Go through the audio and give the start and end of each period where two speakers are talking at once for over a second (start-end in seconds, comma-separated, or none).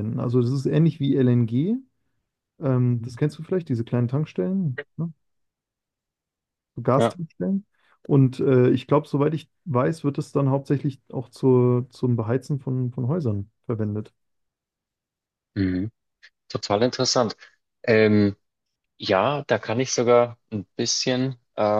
none